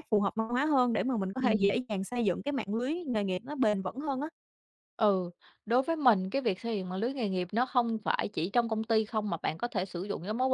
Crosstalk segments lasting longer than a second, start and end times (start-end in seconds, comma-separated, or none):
none